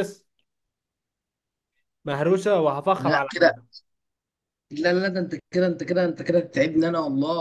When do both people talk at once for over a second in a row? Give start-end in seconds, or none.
none